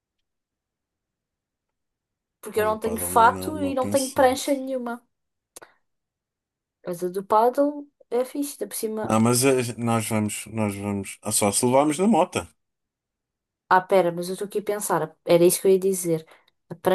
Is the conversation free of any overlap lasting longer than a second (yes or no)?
no